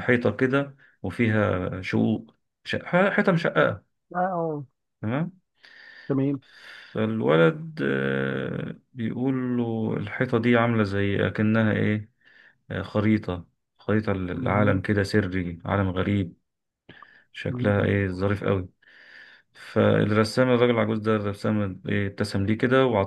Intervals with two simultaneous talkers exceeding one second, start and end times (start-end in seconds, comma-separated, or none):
none